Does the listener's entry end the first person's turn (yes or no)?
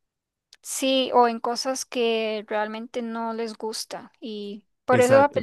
no